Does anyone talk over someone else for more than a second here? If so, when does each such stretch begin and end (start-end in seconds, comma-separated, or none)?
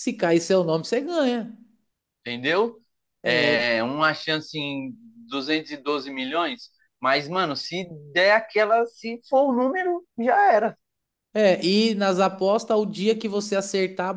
none